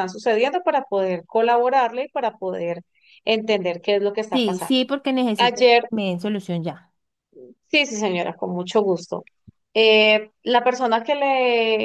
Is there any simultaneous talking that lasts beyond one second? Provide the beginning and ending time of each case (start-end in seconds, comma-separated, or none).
none